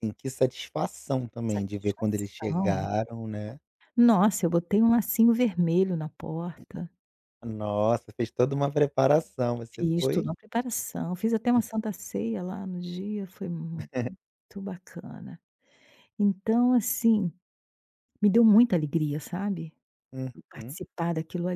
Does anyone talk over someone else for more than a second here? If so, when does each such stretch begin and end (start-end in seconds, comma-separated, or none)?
1.5-2.8